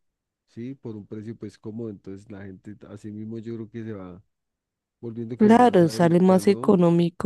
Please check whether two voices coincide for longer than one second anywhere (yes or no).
yes